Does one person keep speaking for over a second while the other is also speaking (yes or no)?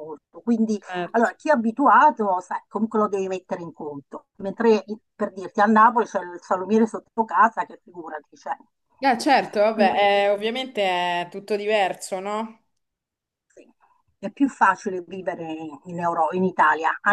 no